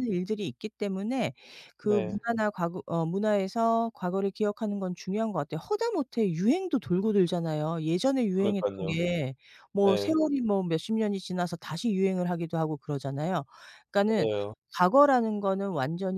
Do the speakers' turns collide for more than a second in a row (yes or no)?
no